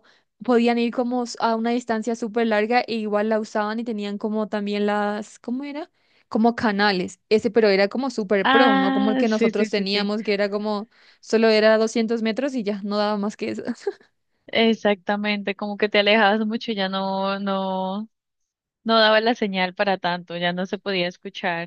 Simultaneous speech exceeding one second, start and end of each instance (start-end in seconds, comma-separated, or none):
8.4-10.1